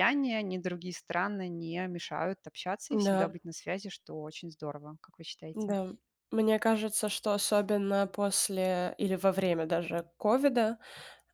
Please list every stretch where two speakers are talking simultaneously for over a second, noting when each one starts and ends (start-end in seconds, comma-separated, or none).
none